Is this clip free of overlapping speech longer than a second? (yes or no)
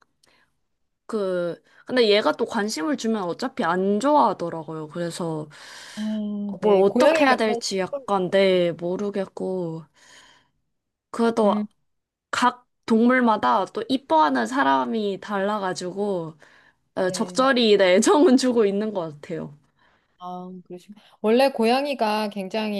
no